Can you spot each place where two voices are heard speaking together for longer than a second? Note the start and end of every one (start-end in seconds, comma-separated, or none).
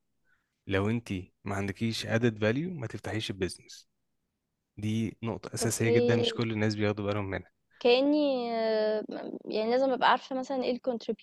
none